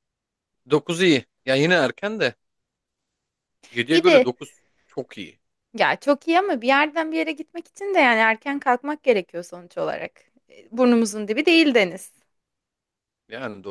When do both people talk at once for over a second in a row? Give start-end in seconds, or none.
none